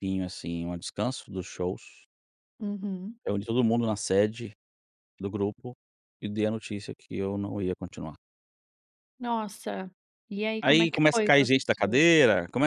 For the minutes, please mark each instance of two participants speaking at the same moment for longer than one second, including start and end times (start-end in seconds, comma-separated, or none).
10.6-12.0